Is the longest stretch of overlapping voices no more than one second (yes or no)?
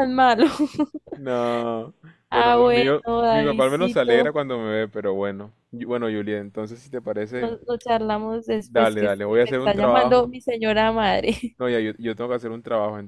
no